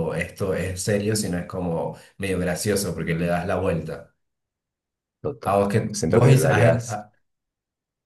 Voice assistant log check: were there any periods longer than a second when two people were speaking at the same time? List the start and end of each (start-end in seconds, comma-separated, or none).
5.4-7.1